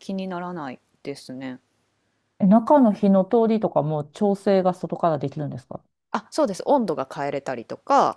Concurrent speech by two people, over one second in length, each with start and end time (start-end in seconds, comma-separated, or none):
none